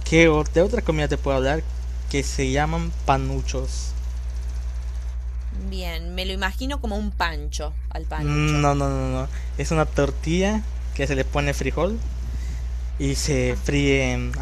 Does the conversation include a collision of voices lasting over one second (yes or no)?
no